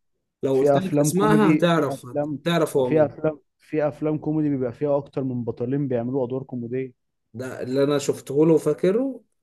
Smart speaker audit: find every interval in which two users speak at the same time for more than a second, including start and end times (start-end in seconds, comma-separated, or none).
0.5-2.1